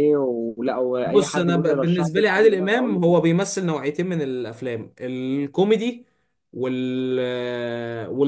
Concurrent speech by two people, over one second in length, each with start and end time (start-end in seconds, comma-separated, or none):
1.0-3.1